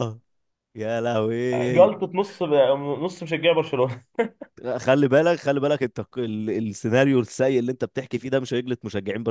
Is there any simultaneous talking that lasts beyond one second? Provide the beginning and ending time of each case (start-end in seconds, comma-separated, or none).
none